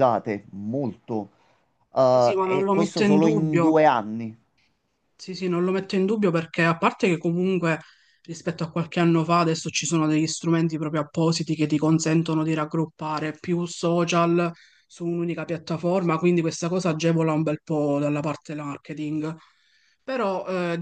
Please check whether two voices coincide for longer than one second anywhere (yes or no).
yes